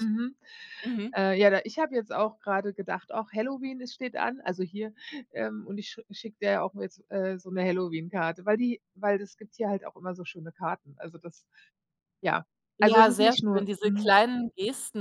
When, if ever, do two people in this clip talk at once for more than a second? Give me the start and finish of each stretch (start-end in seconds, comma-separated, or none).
12.8-14.1